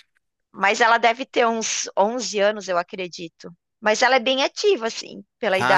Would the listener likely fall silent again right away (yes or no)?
no